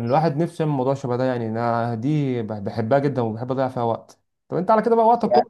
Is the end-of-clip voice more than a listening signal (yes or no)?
no